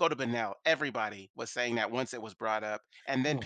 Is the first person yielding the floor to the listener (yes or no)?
no